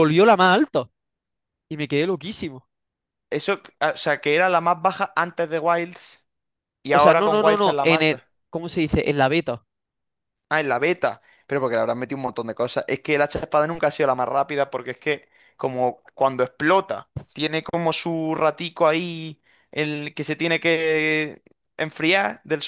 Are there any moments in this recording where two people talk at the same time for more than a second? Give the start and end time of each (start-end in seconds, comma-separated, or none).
6.9-8.3